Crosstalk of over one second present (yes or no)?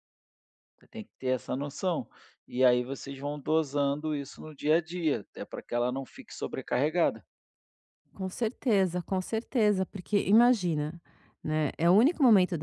no